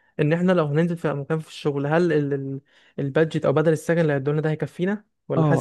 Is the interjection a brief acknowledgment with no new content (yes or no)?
no